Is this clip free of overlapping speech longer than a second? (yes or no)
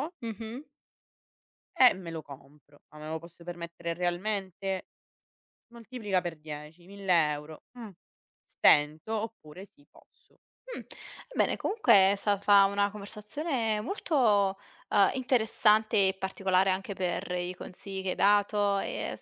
yes